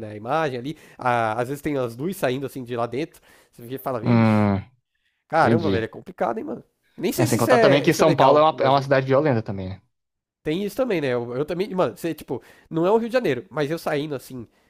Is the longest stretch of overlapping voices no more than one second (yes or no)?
no